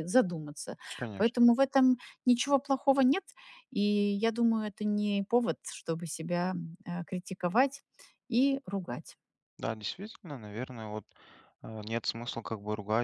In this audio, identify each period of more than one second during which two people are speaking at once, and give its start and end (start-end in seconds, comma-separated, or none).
none